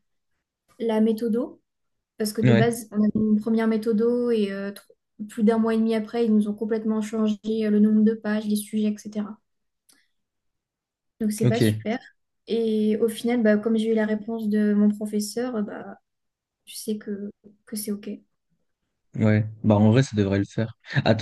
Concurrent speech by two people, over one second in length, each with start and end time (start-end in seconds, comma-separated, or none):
none